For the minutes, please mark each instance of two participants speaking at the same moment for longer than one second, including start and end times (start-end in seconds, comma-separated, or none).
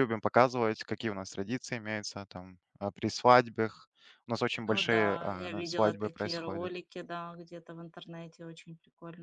4.6-6.7